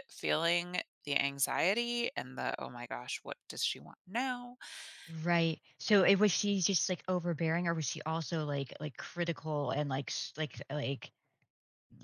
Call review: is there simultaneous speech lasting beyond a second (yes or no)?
no